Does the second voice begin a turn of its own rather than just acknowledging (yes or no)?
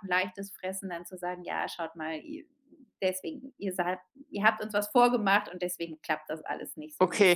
yes